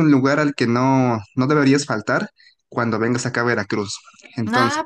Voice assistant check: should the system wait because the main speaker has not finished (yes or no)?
no